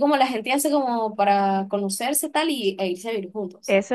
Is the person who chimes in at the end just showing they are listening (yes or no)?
no